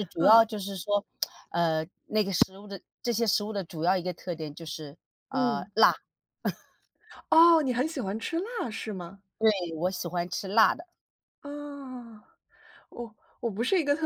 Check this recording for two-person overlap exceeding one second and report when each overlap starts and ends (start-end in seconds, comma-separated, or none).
none